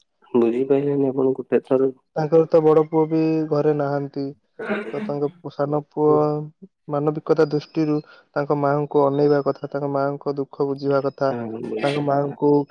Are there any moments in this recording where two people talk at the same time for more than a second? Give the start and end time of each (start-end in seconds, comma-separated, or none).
none